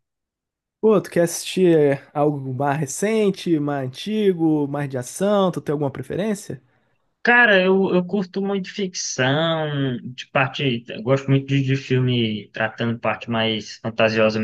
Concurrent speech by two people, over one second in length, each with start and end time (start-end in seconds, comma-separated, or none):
none